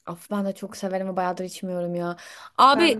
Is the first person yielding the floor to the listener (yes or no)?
no